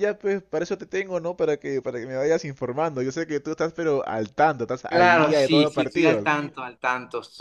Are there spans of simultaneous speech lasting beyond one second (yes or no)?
yes